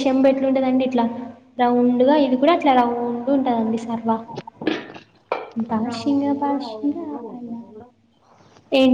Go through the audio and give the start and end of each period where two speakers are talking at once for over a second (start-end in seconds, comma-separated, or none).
5.9-7.8